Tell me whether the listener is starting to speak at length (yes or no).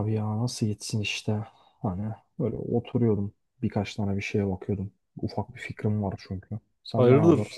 yes